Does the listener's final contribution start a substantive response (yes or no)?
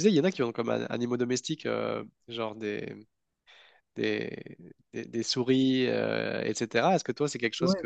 no